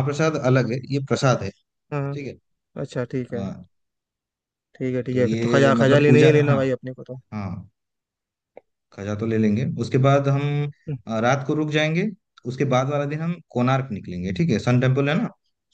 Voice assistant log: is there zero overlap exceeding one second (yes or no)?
no